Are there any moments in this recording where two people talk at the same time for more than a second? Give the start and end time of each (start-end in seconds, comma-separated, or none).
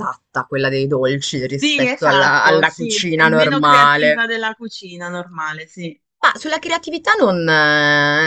1.6-4.2